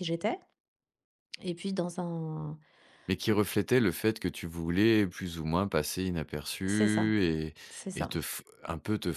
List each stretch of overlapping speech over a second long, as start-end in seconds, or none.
none